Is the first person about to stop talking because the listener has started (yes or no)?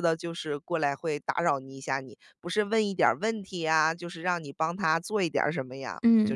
yes